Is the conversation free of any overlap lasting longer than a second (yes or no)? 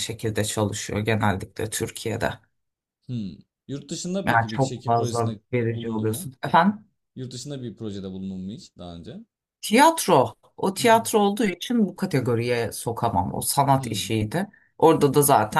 no